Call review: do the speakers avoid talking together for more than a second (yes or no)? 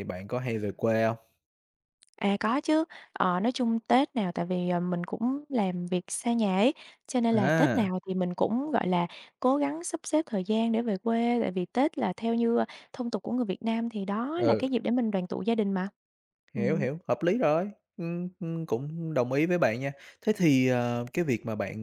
yes